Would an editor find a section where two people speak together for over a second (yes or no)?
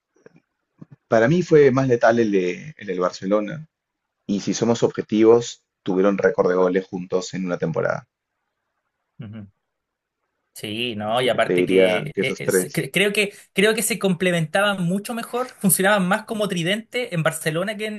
yes